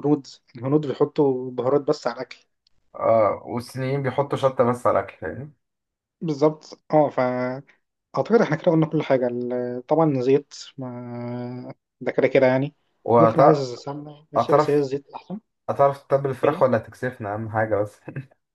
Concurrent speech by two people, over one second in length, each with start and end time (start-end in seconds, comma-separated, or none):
none